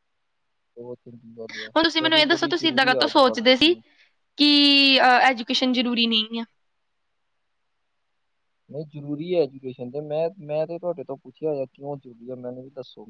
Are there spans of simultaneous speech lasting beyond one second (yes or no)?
yes